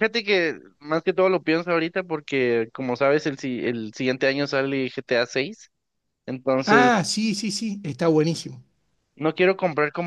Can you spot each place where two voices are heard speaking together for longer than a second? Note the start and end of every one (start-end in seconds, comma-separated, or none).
none